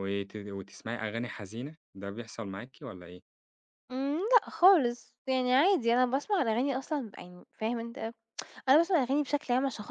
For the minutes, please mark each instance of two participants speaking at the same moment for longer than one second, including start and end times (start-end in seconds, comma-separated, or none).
none